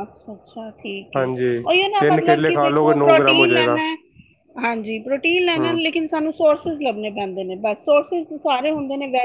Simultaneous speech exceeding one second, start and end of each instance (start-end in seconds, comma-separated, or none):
2.0-3.8